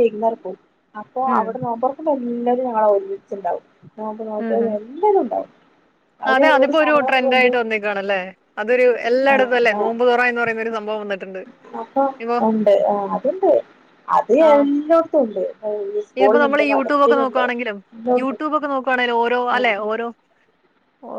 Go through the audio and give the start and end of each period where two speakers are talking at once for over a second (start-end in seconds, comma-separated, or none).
none